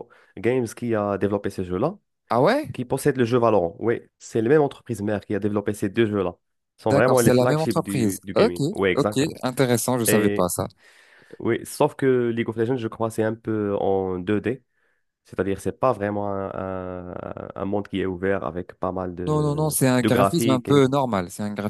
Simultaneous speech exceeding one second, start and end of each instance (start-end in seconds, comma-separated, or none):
6.9-9.4, 19.3-20.9